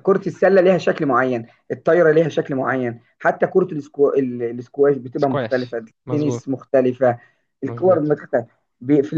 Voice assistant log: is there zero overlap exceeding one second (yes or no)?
no